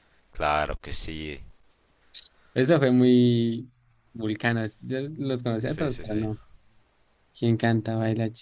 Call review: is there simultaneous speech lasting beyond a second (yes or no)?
no